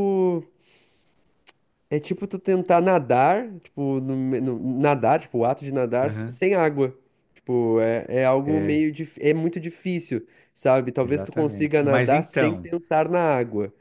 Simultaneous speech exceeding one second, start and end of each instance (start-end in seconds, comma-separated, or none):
11.0-12.7